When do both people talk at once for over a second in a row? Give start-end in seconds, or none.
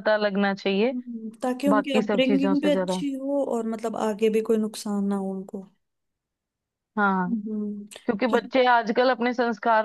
1.7-3.0